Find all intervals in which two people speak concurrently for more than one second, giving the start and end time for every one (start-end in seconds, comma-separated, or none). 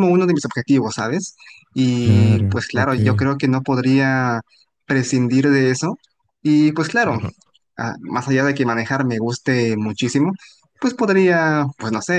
2.0-3.3